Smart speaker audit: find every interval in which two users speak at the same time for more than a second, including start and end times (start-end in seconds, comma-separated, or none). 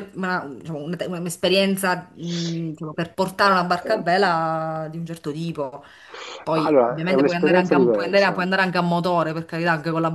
6.5-8.4